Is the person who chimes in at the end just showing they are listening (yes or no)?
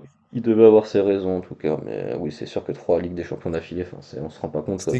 no